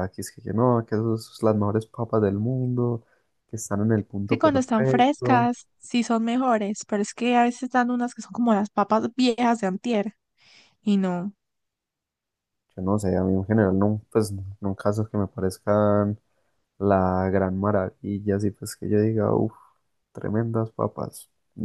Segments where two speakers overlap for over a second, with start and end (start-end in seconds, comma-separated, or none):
4.3-5.5